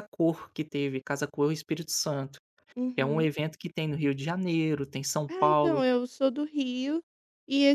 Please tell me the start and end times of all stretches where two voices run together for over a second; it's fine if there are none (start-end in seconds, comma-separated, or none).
none